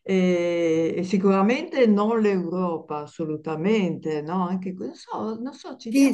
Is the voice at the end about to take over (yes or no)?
yes